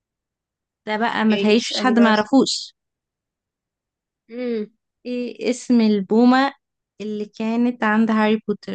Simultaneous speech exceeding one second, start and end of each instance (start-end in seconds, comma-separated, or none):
1.0-2.3